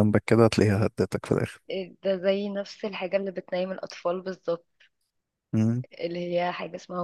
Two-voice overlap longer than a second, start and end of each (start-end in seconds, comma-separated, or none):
none